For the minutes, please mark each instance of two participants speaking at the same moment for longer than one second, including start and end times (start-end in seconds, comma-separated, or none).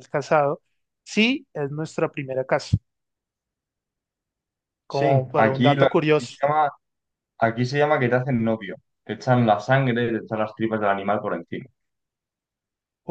4.9-6.4